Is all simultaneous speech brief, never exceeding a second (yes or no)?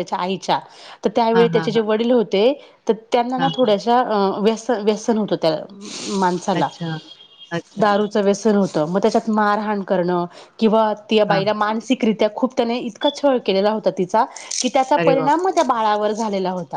yes